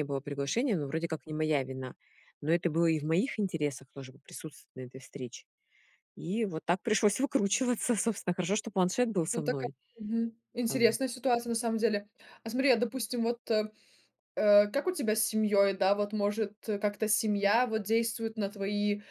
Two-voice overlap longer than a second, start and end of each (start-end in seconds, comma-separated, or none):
none